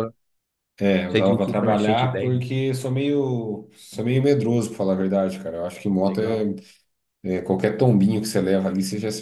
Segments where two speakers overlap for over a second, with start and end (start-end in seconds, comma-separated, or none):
1.1-2.4